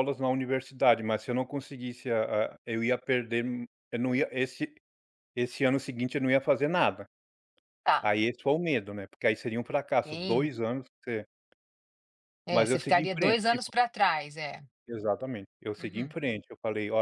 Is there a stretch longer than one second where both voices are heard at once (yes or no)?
yes